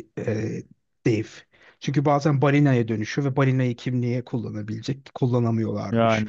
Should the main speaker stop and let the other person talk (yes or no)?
no